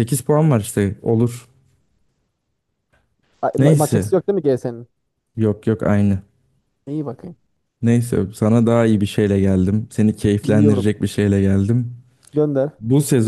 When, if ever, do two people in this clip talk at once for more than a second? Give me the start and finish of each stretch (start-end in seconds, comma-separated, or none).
none